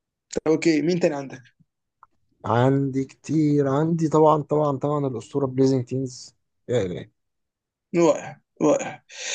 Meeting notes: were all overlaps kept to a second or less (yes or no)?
yes